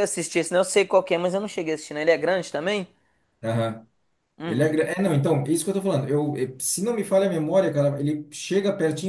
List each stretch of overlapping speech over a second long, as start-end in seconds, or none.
none